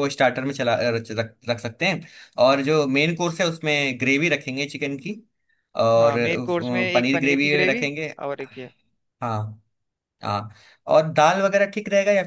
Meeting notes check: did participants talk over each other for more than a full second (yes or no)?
yes